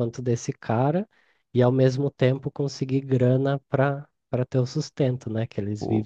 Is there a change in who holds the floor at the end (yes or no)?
yes